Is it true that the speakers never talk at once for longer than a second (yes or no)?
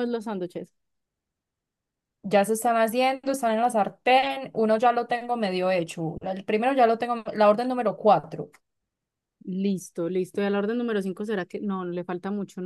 yes